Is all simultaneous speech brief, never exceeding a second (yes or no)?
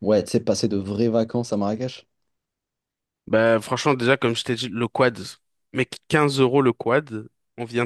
yes